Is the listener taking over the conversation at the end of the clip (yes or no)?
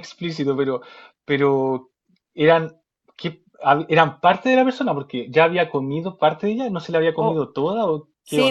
yes